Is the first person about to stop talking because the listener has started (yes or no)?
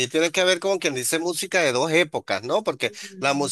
no